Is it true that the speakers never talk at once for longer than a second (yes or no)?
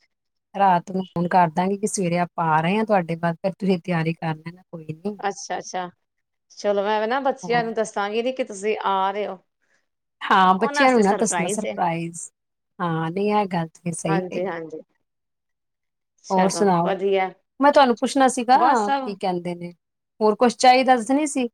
yes